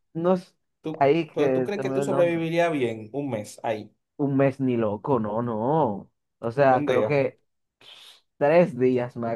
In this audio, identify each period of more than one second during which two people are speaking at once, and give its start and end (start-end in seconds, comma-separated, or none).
1.0-2.4